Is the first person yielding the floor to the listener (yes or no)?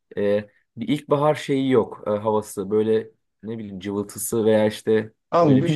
yes